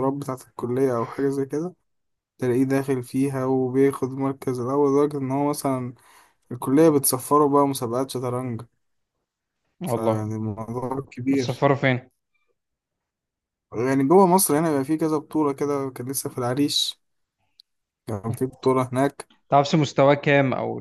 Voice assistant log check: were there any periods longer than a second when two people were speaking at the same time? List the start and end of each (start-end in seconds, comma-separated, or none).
none